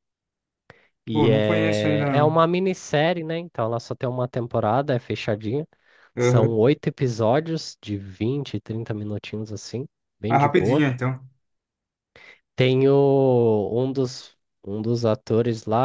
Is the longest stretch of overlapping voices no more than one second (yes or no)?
no